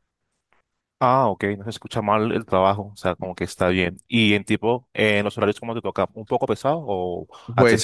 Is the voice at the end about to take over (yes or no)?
yes